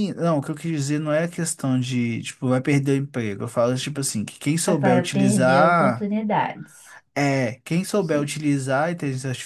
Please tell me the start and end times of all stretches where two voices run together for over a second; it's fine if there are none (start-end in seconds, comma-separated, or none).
4.8-6.1